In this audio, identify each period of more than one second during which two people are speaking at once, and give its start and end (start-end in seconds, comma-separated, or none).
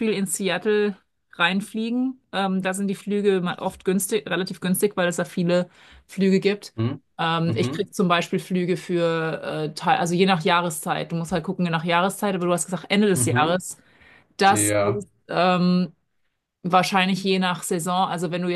none